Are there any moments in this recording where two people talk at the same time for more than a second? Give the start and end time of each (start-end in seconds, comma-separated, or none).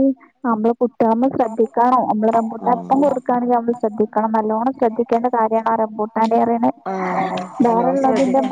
2.7-4.1